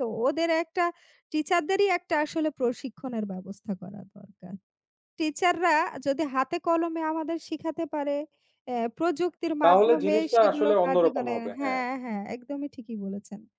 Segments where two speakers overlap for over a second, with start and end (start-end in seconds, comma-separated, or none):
9.6-11.8